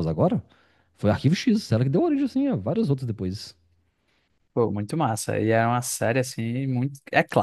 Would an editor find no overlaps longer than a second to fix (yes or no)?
yes